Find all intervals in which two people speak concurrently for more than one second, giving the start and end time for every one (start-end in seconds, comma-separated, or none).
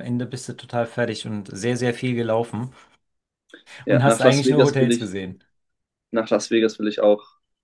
3.9-5.1